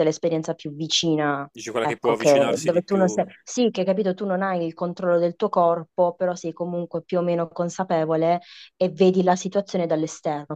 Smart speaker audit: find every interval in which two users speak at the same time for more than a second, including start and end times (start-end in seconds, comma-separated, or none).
1.5-3.2